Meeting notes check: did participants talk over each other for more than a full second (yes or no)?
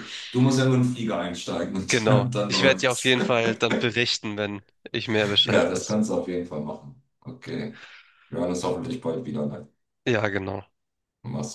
yes